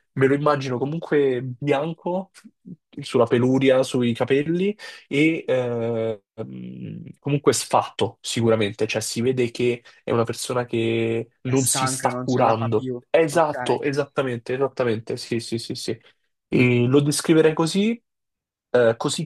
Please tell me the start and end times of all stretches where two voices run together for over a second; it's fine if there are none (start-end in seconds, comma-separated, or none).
11.4-13.8